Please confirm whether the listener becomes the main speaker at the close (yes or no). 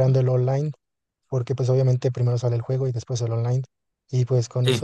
no